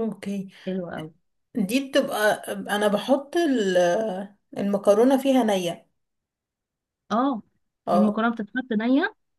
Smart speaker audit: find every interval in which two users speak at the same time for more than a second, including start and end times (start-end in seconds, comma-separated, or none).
none